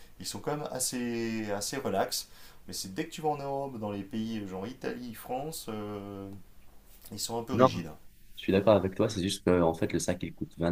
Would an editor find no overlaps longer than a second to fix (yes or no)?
yes